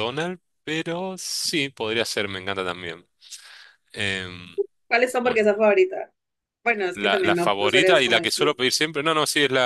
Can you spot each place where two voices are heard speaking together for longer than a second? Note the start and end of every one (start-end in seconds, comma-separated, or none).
7.0-8.5